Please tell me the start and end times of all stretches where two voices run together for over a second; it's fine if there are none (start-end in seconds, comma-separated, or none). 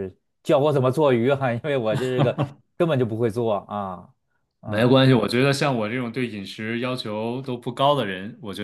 none